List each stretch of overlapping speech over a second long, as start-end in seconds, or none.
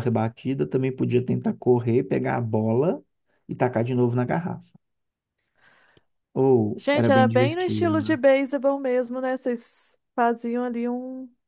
6.8-8.2